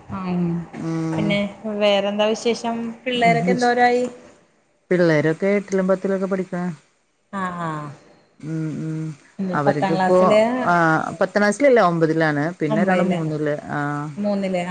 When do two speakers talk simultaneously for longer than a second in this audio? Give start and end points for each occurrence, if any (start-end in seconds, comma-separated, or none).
none